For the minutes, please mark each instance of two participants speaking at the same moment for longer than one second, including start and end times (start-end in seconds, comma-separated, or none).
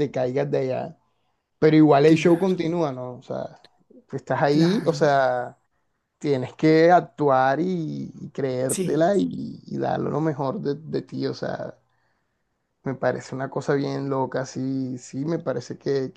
none